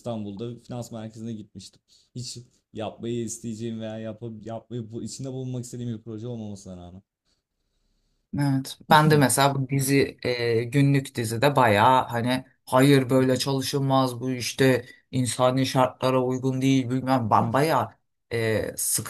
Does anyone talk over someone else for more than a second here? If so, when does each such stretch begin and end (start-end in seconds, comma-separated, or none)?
none